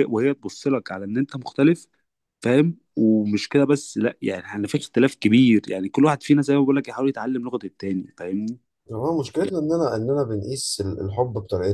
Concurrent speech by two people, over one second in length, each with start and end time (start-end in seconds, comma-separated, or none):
none